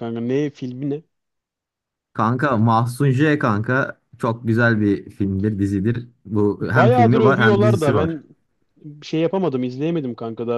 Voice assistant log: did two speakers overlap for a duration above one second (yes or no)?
yes